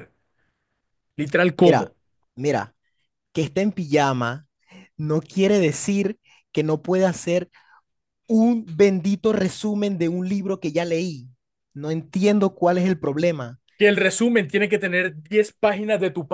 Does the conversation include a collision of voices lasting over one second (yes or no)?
no